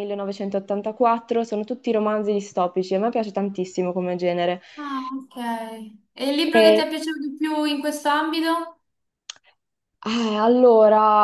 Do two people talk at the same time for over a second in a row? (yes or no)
no